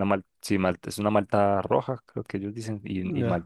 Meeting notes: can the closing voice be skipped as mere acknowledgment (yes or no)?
no